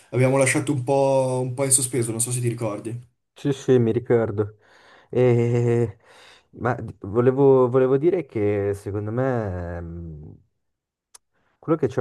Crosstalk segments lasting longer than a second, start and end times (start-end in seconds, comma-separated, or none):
none